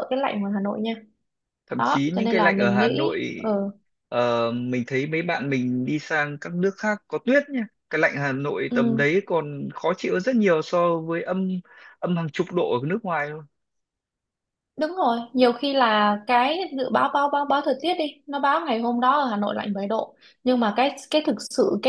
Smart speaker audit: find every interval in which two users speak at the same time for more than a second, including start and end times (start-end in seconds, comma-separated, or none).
1.8-3.3